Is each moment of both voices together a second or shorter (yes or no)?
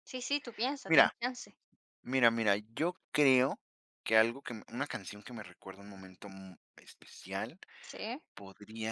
yes